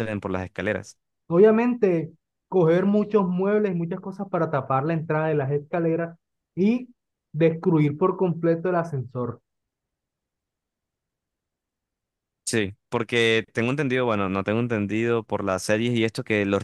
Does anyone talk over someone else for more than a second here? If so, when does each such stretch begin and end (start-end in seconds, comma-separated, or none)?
none